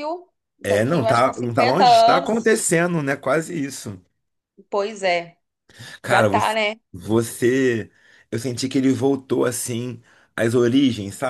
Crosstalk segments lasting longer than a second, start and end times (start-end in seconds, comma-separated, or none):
0.6-2.6